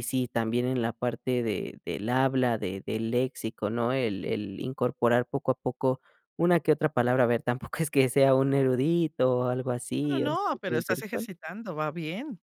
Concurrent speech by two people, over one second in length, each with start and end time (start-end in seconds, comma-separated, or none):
10.1-11.3